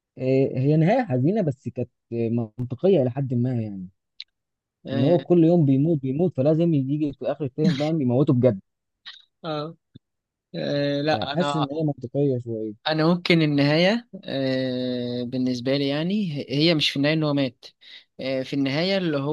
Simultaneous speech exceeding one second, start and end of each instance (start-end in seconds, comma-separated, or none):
none